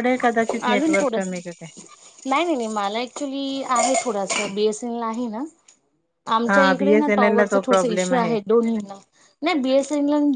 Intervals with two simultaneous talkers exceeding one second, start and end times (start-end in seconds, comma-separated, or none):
6.5-8.1